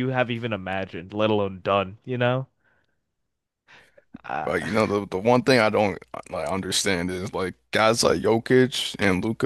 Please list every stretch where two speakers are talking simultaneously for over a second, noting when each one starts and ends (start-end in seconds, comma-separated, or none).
none